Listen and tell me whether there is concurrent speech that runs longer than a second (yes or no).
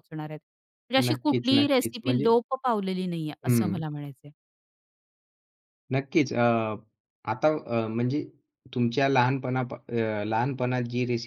yes